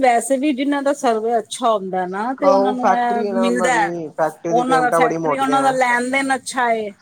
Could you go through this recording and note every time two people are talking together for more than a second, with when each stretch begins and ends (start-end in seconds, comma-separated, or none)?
2.5-3.8, 4.5-5.8